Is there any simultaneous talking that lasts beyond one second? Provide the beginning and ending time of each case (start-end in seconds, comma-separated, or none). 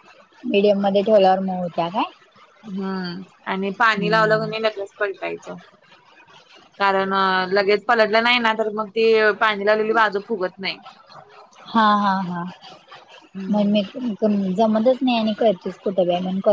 none